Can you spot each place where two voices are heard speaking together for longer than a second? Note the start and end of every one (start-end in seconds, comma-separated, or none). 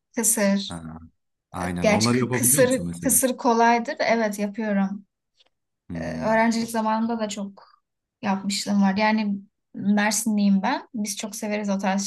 1.8-3.2